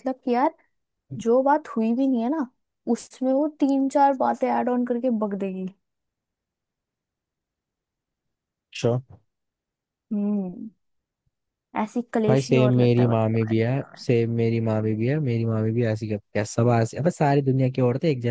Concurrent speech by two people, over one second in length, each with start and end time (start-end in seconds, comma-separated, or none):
12.3-13.5